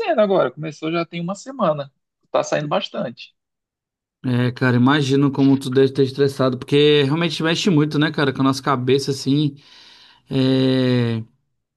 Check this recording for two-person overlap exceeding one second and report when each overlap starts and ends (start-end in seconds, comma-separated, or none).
none